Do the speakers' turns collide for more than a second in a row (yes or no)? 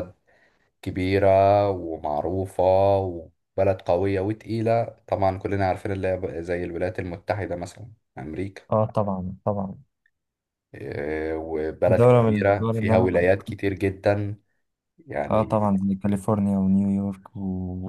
yes